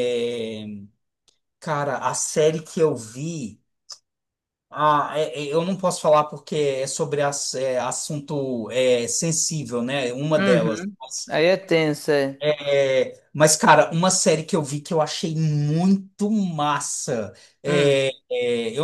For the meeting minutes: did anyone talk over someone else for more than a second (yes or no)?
no